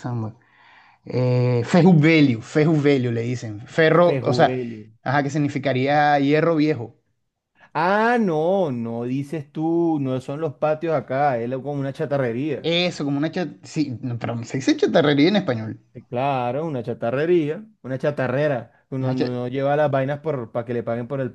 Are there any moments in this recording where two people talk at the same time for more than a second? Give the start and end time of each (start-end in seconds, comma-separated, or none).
none